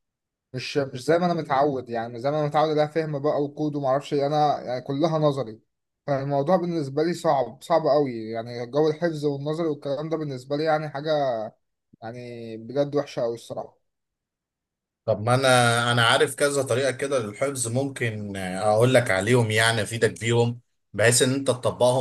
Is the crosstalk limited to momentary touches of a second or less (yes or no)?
yes